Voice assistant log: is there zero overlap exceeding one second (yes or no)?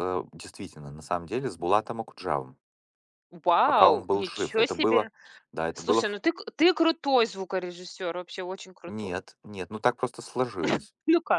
no